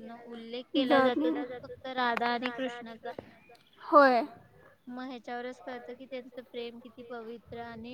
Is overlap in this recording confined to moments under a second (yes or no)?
no